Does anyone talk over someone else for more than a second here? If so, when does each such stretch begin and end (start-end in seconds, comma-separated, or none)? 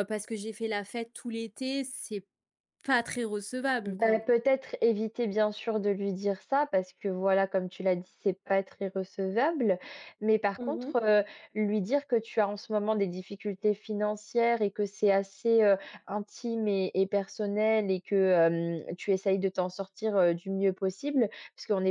none